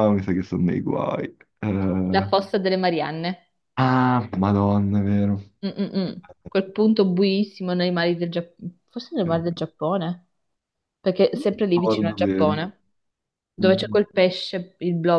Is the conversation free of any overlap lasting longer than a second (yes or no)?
no